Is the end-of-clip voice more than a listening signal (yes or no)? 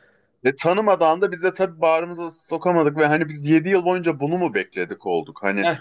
no